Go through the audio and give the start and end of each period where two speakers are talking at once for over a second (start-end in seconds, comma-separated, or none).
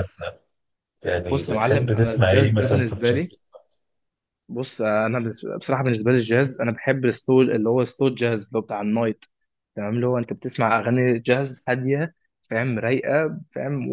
1.3-3.3